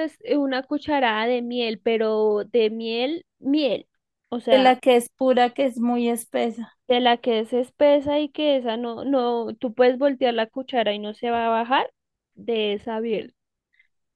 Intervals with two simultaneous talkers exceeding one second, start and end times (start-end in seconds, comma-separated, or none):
none